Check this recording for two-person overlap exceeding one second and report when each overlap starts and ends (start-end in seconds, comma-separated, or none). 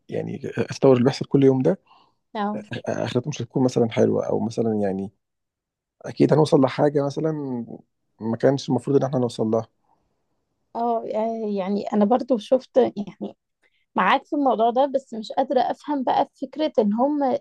none